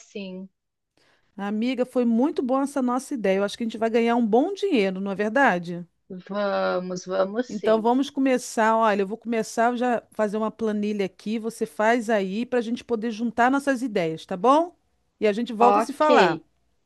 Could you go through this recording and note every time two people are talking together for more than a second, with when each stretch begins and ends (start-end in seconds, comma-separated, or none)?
none